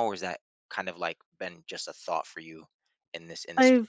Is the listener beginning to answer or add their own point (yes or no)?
yes